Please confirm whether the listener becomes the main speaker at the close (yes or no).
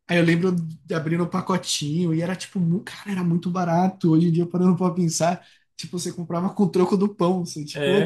no